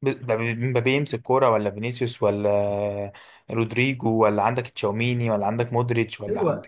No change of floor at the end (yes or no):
yes